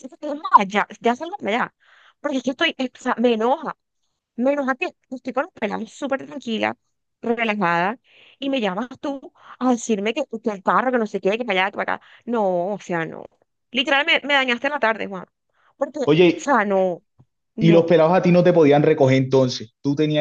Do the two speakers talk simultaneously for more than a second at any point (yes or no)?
no